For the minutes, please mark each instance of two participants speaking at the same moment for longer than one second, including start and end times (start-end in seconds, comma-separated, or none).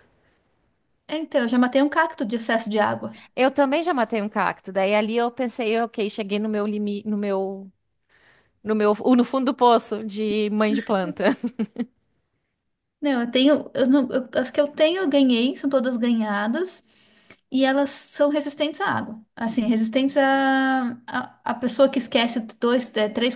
none